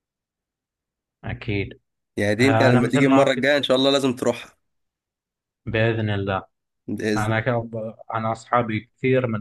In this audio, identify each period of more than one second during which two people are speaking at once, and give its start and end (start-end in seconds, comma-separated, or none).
2.4-3.7